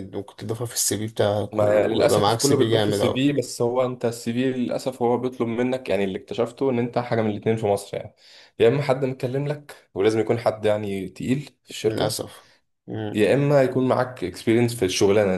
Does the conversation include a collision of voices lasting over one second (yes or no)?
yes